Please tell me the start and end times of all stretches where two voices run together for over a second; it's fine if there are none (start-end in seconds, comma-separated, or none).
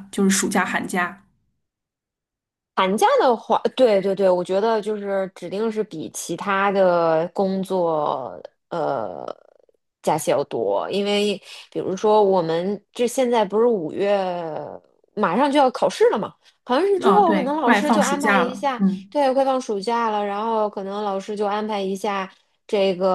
17.0-19.1